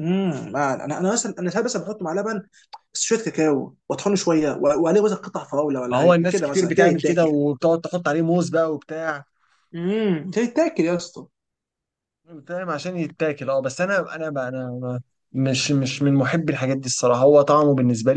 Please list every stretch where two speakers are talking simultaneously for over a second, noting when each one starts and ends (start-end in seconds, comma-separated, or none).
5.8-7.3